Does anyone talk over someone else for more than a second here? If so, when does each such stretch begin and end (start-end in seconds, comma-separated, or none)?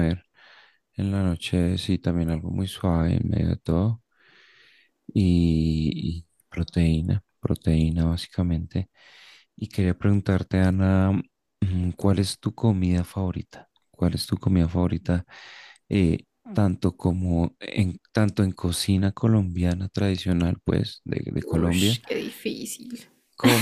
none